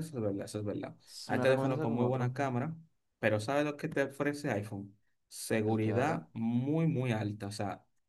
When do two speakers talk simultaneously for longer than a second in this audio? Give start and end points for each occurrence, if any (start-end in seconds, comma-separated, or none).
1.1-2.3